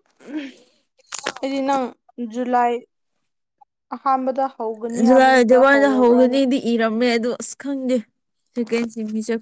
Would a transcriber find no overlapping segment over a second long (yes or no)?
no